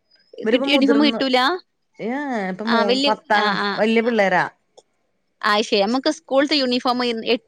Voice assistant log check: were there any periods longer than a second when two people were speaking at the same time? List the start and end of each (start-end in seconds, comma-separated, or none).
none